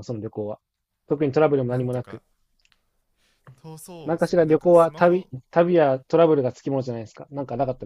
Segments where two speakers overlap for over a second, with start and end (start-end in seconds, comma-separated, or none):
4.0-5.3